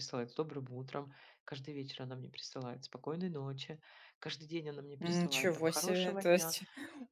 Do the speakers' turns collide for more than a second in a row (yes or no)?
yes